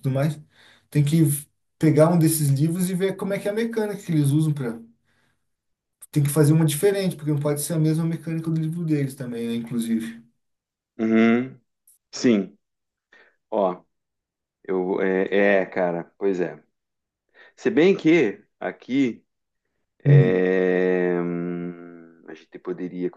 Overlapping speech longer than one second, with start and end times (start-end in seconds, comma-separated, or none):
none